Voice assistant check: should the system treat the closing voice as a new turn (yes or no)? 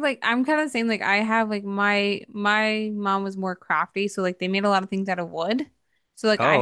no